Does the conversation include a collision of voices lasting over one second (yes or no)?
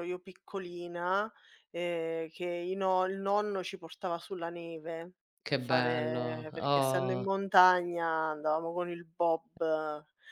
yes